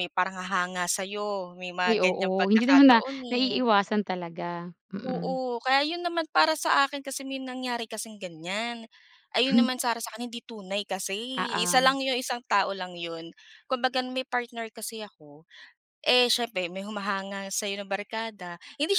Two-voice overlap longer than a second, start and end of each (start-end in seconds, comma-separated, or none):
1.9-3.6